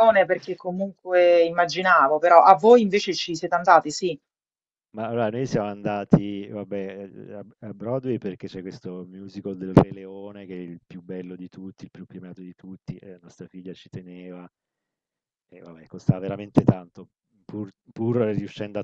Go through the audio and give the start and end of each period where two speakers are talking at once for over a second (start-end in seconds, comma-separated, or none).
none